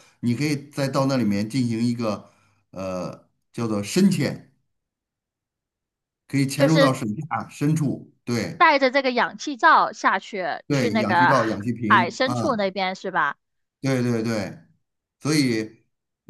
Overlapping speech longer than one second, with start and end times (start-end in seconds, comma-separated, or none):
10.7-12.6